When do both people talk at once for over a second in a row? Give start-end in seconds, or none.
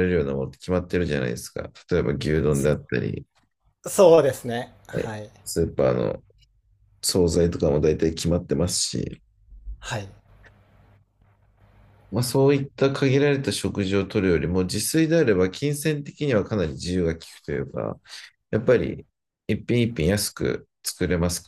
none